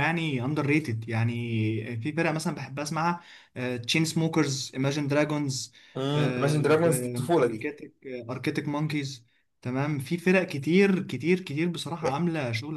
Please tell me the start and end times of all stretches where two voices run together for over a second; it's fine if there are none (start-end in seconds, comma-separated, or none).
none